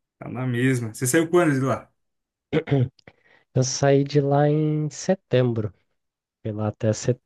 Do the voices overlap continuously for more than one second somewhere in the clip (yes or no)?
no